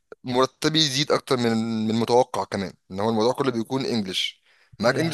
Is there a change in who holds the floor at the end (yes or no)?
no